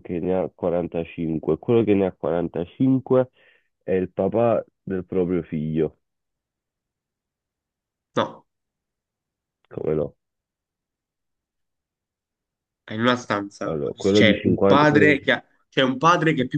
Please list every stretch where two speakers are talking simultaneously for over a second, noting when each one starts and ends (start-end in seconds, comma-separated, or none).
13.6-15.3